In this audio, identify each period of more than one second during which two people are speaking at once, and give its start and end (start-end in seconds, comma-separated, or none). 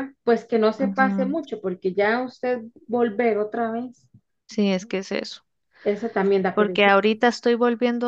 none